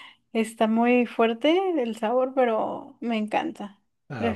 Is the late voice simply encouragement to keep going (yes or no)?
no